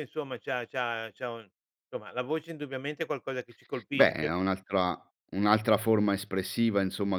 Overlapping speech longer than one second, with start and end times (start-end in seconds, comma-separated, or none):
none